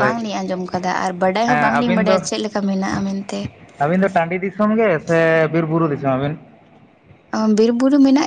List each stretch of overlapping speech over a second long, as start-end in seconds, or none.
none